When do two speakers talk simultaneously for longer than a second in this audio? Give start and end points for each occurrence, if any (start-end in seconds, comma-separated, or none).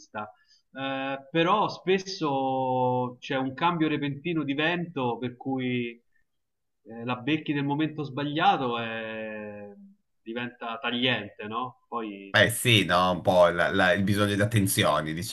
none